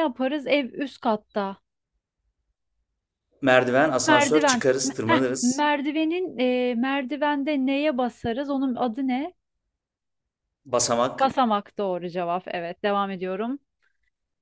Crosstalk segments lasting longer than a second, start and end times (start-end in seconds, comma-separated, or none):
4.1-5.6